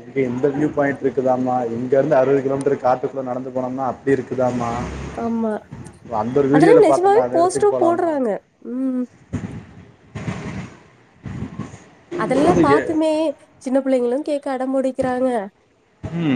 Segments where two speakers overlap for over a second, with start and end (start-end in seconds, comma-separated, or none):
6.5-8.1